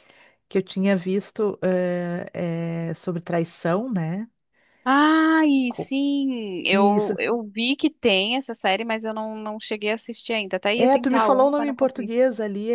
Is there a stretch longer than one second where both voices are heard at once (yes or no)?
yes